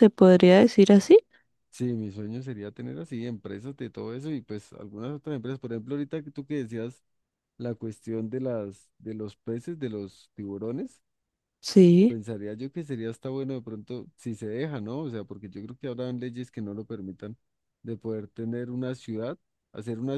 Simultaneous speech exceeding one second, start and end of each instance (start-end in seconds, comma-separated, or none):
none